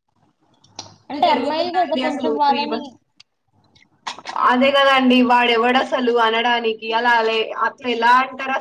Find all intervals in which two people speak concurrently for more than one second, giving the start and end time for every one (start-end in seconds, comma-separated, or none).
1.1-2.8